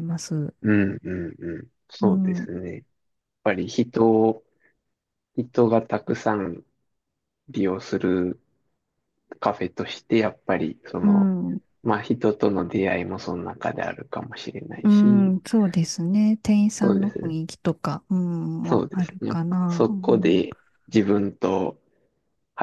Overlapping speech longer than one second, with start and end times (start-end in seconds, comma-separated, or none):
18.6-20.4